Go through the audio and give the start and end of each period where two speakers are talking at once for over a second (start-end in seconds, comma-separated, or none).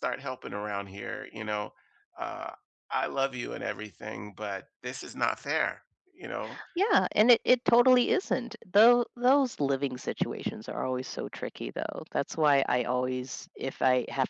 none